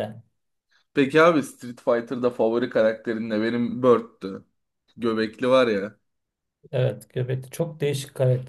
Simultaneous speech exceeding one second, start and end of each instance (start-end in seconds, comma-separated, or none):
none